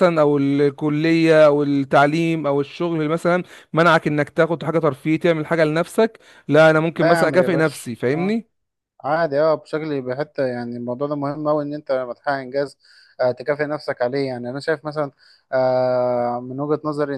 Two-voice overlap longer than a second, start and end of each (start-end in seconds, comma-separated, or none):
6.9-8.4